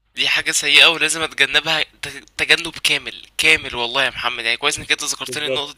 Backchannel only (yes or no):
yes